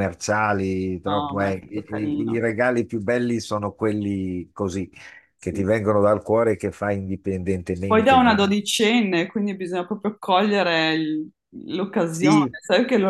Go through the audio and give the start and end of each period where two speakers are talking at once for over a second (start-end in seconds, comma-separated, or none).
1.1-2.4